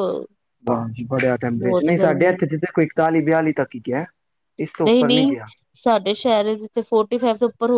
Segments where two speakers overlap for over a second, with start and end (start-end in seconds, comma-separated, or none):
none